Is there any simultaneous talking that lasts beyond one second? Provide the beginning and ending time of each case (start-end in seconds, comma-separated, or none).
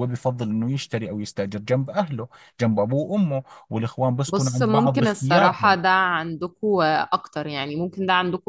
4.3-5.8